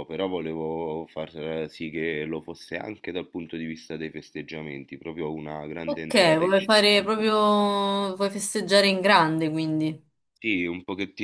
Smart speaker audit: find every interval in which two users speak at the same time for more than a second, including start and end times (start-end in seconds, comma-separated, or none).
5.8-7.1